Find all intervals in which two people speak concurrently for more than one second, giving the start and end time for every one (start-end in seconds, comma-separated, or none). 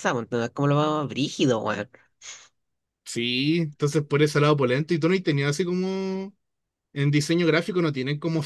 none